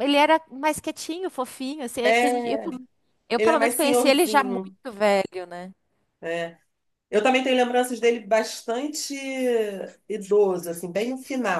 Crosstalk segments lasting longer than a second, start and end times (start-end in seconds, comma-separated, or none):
3.4-4.8